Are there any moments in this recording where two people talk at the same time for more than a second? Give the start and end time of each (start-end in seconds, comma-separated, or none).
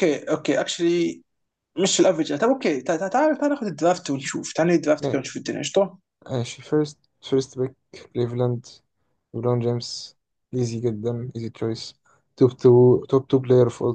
none